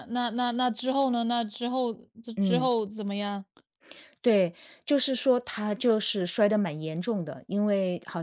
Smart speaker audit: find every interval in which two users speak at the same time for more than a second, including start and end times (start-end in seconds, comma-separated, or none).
none